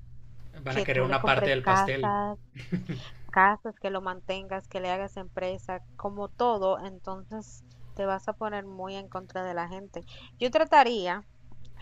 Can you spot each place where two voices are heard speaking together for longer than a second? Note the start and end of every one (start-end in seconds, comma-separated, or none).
0.7-2.1